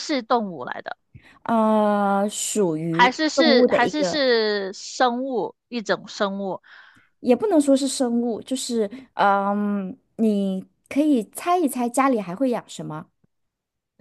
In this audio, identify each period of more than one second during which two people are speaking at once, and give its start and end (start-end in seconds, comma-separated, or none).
2.9-4.2